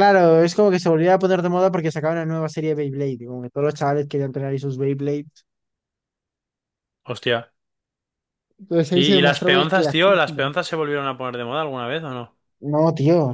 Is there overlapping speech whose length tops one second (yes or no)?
yes